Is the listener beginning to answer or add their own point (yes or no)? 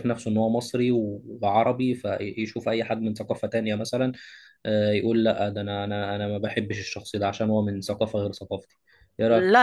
yes